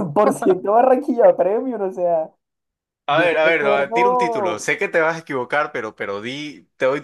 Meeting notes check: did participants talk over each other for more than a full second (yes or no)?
yes